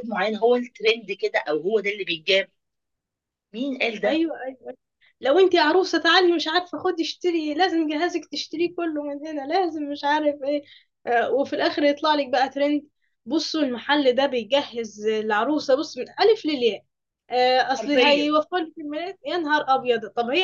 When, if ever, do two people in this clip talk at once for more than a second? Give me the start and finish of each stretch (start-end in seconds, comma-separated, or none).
none